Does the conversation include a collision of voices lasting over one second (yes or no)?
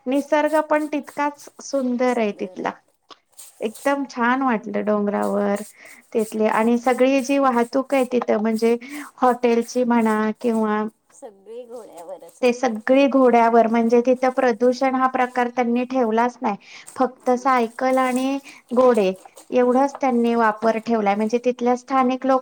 no